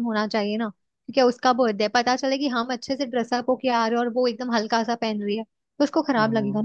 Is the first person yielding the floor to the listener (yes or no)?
yes